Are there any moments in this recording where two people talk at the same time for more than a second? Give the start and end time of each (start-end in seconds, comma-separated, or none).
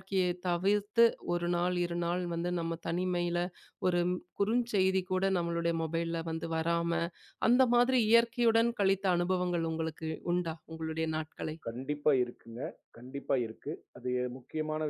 none